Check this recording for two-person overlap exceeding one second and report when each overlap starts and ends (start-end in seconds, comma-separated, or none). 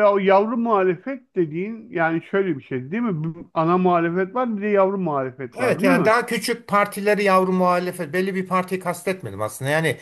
none